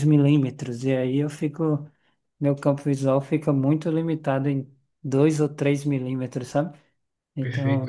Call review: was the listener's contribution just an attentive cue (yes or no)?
no